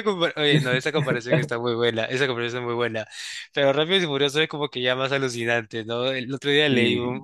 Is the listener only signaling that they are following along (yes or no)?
yes